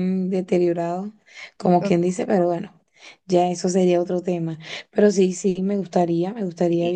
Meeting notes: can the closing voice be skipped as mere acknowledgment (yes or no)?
yes